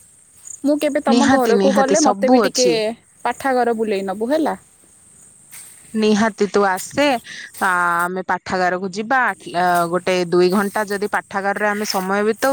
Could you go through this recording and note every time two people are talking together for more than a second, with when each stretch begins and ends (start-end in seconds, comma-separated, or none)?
1.1-2.7